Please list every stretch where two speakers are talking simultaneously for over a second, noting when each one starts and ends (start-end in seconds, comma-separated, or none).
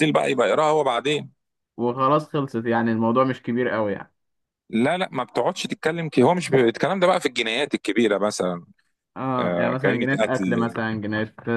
9.4-10.8